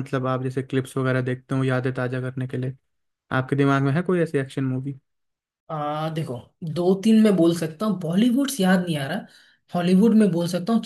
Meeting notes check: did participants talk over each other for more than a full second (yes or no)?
no